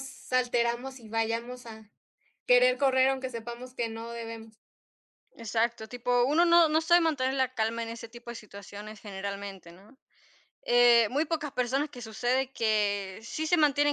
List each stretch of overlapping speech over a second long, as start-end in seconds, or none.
none